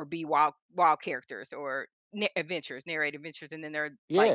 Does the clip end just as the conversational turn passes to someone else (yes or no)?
no